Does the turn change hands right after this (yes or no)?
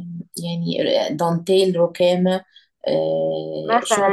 yes